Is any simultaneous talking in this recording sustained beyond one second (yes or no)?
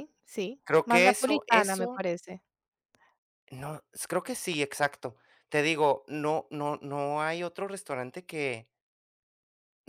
yes